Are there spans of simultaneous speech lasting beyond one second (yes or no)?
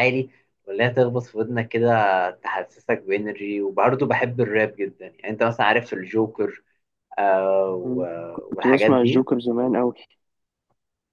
yes